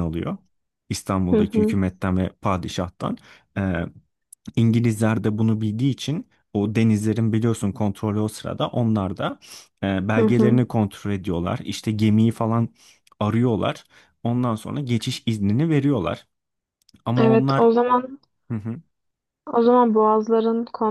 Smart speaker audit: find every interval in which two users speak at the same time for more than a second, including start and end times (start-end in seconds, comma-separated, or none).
none